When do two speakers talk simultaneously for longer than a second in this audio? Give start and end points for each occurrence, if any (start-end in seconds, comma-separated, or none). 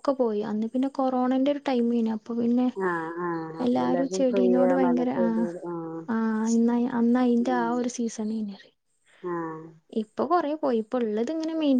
3.7-5.5